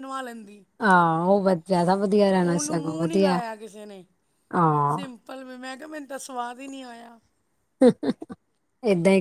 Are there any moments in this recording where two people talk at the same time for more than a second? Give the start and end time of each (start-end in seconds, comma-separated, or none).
none